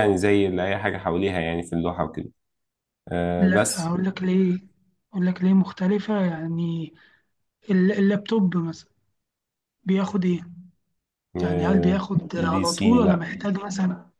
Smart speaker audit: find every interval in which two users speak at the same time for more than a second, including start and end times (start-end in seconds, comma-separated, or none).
11.4-13.3